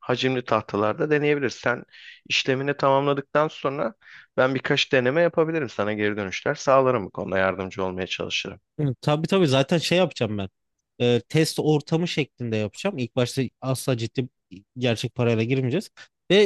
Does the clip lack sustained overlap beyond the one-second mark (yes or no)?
yes